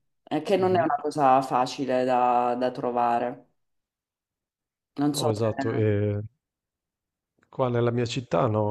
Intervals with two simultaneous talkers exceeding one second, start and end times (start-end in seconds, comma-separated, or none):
none